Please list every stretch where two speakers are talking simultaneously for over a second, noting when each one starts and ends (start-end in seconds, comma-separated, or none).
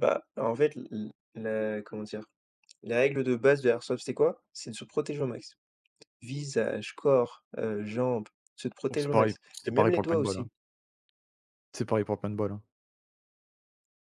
8.9-10.5